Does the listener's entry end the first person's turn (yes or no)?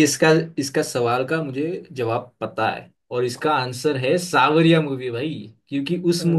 no